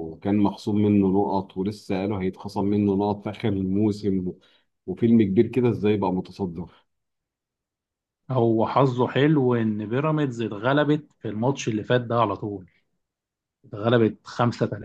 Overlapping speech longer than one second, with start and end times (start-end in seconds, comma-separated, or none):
none